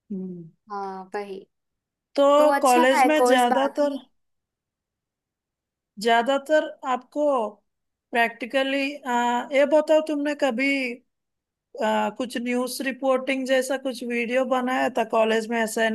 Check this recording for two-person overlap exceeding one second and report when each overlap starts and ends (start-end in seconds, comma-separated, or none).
2.6-4.0